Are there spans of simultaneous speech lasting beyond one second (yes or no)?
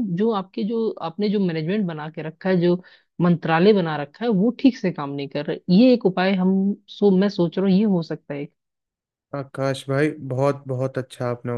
no